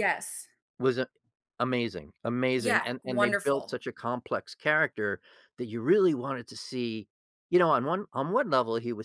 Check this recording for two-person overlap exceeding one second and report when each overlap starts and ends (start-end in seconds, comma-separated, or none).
2.6-3.8